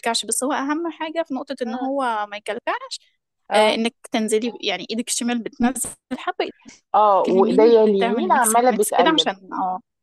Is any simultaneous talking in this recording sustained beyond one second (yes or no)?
yes